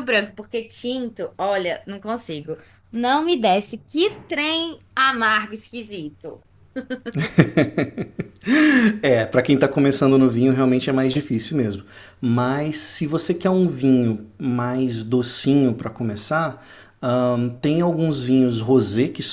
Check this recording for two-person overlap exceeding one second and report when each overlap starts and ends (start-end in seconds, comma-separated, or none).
none